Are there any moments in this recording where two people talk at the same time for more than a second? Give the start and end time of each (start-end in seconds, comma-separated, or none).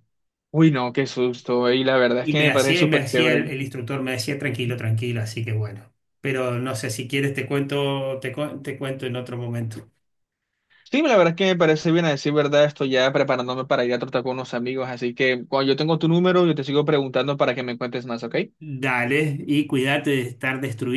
2.2-3.5